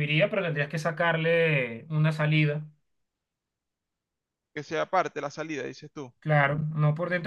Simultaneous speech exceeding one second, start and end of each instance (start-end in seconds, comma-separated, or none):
none